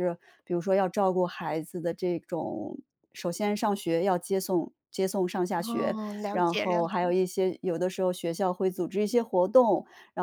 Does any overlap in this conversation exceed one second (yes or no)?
yes